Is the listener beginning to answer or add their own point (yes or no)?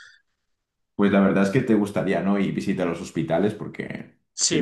yes